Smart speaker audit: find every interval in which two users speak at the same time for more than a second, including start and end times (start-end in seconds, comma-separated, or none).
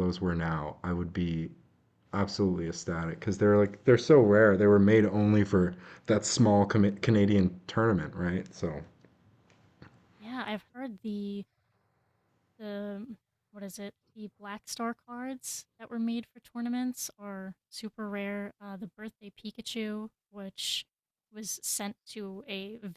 none